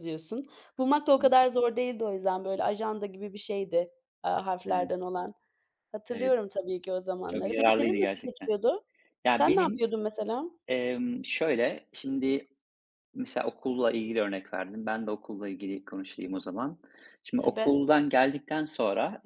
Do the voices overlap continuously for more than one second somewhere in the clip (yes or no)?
yes